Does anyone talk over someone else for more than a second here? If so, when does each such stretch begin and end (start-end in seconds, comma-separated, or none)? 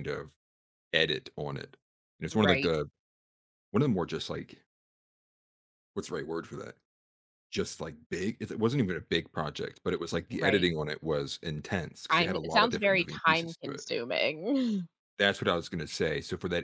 12.1-13.8